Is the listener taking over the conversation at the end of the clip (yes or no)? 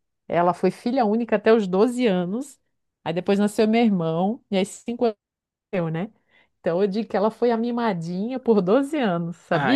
yes